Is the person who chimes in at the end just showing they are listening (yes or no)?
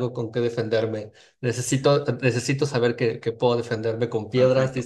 no